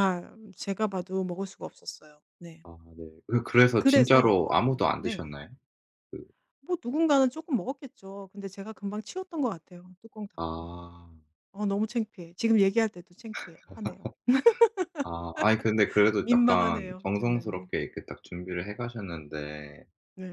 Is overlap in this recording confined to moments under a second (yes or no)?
no